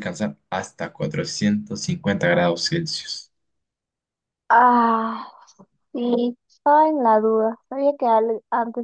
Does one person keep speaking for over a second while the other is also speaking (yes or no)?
no